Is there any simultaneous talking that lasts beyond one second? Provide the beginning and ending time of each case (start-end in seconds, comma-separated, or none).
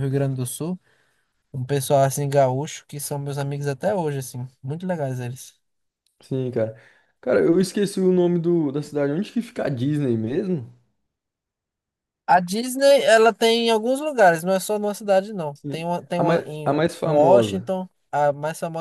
15.5-17.7